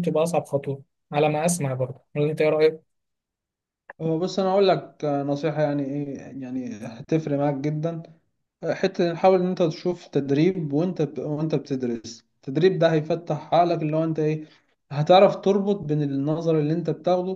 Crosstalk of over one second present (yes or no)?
no